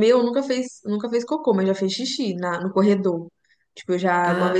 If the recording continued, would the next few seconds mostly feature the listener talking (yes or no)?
no